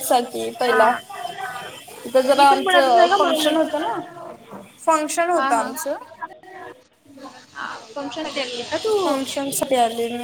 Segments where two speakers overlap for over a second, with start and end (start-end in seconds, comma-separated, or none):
2.4-3.6